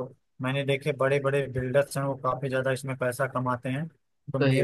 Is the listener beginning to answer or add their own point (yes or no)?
no